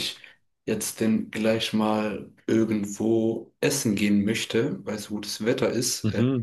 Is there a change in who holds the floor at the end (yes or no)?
no